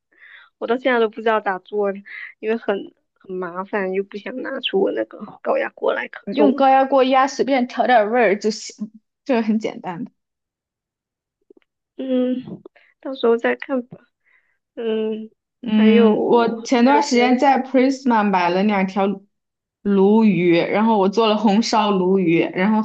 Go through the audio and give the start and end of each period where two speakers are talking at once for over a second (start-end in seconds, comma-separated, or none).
15.7-17.6